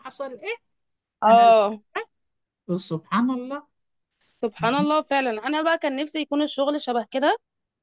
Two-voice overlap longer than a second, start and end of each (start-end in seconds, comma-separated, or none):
none